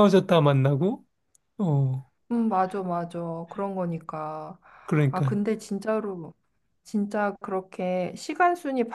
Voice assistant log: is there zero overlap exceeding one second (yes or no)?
yes